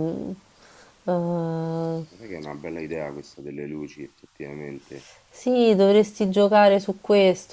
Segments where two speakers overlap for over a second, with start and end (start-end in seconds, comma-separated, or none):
none